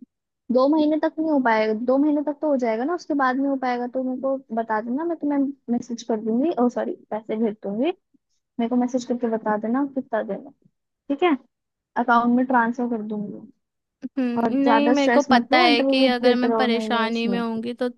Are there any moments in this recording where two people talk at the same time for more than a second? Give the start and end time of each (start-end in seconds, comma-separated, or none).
14.4-17.4